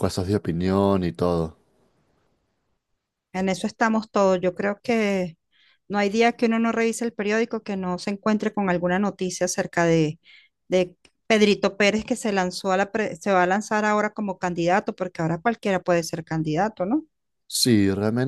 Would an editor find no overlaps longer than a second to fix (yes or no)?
yes